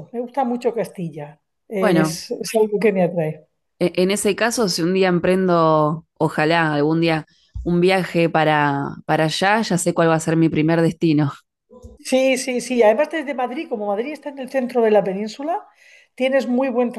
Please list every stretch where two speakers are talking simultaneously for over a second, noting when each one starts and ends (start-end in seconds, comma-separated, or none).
none